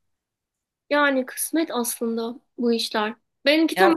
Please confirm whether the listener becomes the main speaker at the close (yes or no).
no